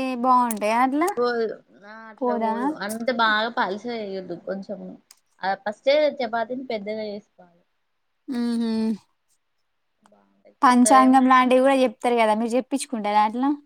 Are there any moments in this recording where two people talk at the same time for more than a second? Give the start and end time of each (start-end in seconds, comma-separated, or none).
none